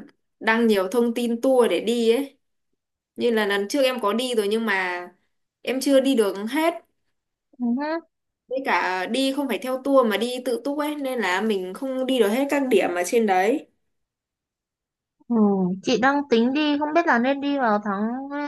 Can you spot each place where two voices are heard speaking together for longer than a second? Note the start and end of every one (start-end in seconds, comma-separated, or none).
none